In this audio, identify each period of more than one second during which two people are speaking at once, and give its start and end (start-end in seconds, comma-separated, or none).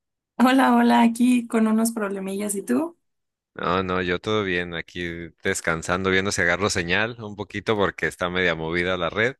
none